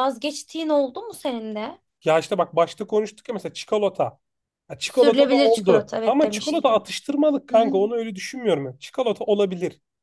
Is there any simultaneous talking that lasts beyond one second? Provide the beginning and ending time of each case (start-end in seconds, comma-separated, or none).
4.8-6.9